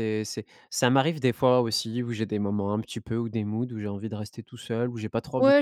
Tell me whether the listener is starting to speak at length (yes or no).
yes